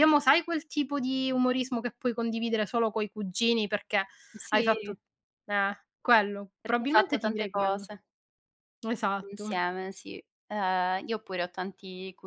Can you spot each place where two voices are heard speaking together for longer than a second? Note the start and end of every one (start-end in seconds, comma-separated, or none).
6.6-7.9